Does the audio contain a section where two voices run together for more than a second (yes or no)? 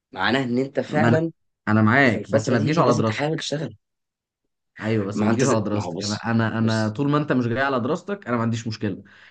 yes